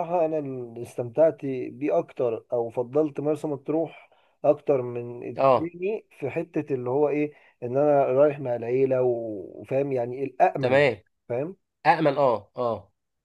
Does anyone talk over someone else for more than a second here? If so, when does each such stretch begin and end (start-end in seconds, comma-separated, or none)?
none